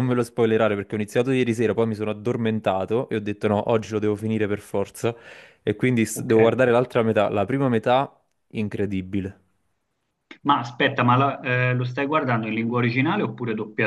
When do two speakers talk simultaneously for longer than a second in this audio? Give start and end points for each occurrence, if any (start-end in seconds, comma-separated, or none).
none